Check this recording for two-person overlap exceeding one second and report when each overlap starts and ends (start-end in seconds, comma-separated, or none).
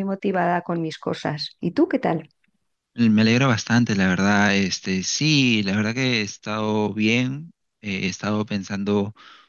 none